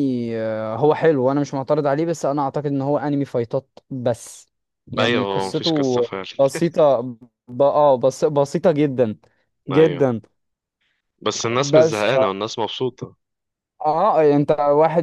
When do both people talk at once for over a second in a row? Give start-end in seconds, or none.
5.0-6.2